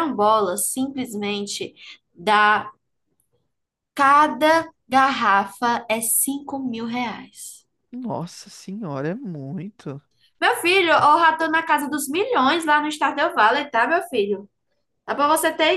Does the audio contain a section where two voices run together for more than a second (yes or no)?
no